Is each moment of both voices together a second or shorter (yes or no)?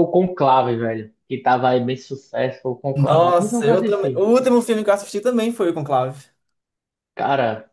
no